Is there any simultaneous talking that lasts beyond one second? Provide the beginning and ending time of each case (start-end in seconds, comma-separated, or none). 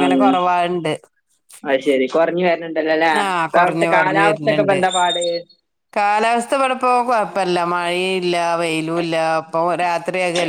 3.2-4.8